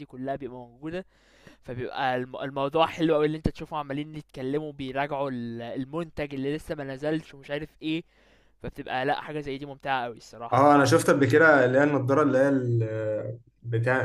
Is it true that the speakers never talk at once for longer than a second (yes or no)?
yes